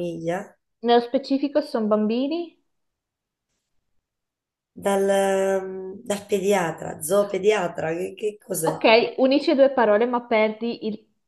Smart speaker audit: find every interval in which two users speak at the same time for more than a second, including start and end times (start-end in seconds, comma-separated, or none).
none